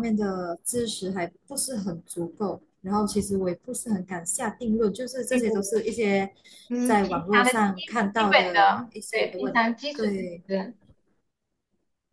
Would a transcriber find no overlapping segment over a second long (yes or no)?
no